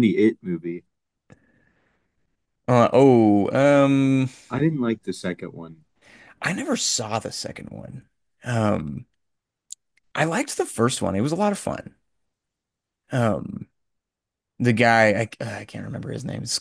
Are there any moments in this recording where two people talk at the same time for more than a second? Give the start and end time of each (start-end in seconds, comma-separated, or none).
none